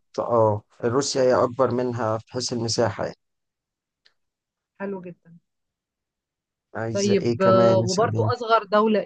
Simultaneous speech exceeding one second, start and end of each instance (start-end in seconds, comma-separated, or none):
6.9-8.3